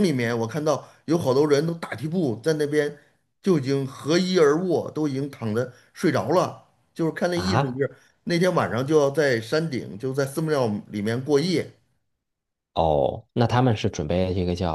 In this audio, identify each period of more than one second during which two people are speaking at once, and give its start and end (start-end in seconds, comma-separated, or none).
none